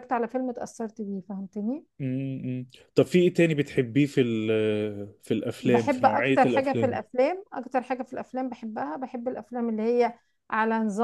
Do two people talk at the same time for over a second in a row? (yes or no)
yes